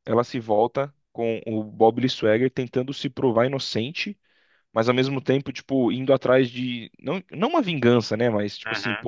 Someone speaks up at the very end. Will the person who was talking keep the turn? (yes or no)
yes